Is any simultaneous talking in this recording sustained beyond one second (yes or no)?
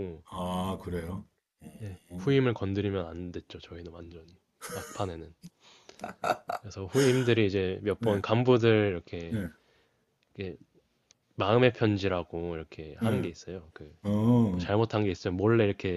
no